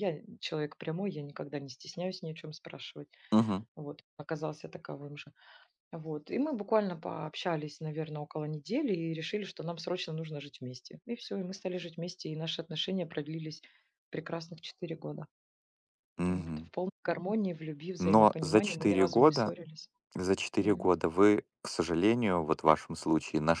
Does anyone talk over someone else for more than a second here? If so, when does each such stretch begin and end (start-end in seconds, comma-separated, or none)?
18.0-19.5